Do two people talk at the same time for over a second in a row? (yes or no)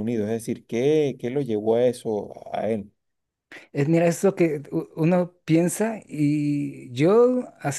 no